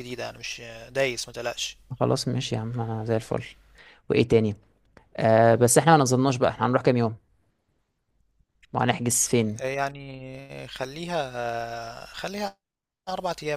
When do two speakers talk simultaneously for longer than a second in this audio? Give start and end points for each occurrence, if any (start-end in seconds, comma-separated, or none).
none